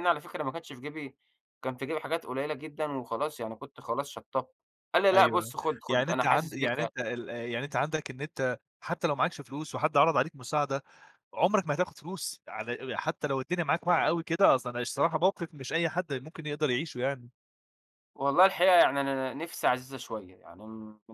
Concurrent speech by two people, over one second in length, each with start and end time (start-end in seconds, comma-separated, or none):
5.1-6.8